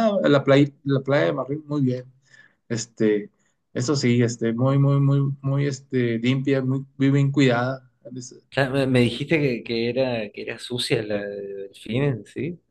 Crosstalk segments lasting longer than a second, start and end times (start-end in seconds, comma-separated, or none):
none